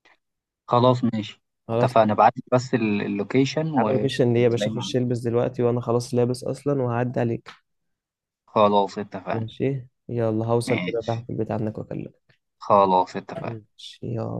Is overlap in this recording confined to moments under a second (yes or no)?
no